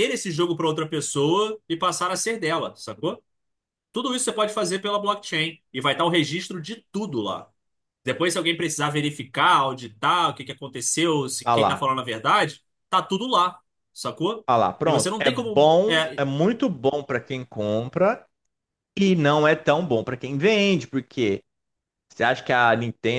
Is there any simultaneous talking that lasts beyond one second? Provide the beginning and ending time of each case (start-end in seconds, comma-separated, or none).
14.8-16.2